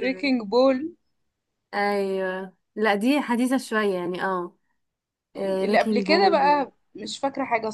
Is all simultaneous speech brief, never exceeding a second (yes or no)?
no